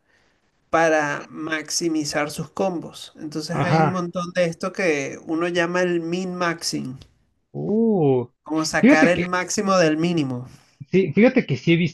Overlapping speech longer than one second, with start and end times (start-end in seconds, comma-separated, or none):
none